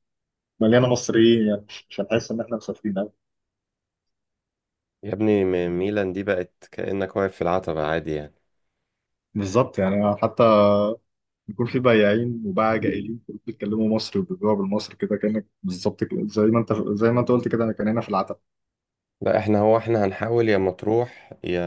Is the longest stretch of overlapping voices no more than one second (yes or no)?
yes